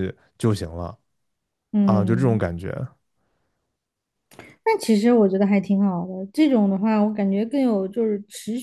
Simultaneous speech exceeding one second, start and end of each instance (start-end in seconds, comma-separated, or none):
none